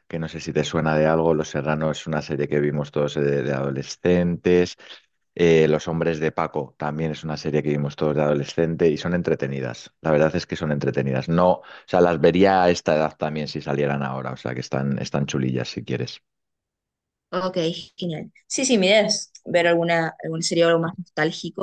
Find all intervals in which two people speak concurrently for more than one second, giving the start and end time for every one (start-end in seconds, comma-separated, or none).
none